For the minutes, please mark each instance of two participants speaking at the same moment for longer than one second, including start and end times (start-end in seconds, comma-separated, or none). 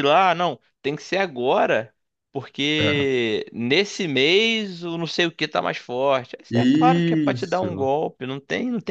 6.5-7.9